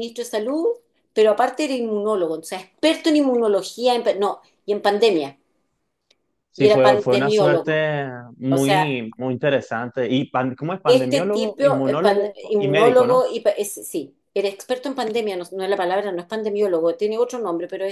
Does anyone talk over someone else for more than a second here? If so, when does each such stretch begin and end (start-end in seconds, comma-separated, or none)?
6.5-7.8, 10.8-13.2